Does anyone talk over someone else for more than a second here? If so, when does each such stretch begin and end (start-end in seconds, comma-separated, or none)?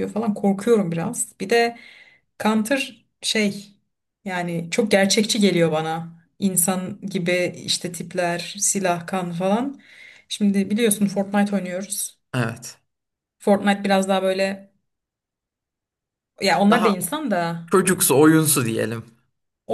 none